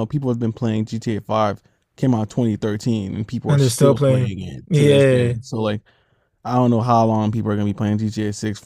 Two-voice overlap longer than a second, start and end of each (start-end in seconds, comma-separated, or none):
3.5-5.3